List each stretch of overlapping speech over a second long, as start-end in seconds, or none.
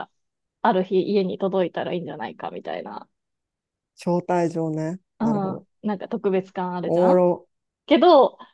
none